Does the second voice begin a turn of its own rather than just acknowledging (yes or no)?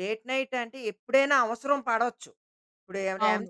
no